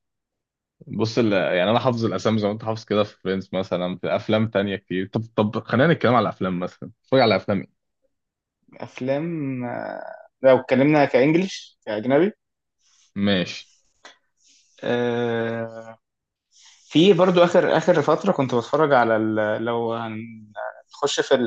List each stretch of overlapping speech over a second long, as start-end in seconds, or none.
none